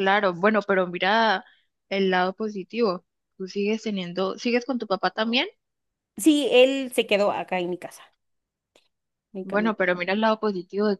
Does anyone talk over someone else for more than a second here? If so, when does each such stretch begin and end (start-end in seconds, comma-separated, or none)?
none